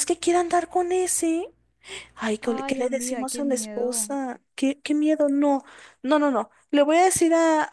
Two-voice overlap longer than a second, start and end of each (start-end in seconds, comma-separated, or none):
2.4-4.1